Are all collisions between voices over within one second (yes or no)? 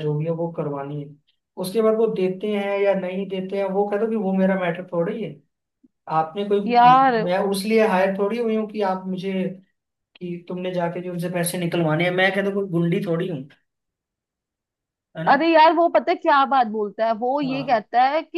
yes